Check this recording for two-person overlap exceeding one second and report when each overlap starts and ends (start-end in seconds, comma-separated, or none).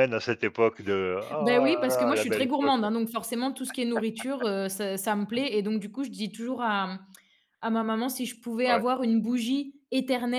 1.4-2.9